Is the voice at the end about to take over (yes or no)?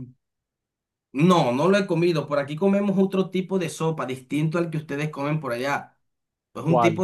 no